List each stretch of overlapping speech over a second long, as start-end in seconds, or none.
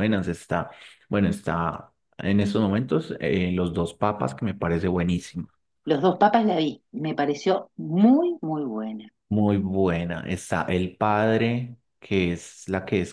none